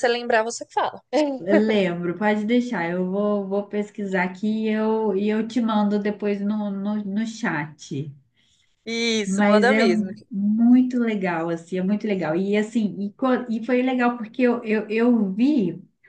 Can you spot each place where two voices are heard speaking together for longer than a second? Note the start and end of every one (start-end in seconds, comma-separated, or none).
none